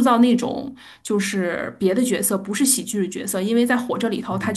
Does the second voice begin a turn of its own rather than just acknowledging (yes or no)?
no